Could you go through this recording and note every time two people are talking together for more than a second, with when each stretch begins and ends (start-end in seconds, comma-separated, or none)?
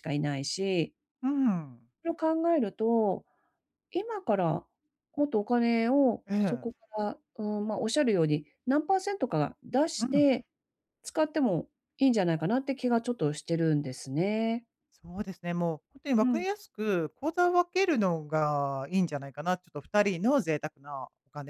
none